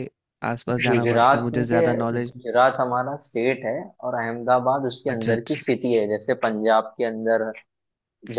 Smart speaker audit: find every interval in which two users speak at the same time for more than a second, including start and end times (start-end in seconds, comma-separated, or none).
0.9-2.5